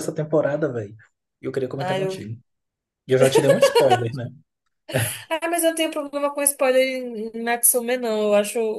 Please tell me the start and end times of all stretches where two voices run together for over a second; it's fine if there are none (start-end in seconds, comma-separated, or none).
none